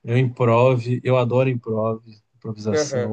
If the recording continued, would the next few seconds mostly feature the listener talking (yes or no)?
yes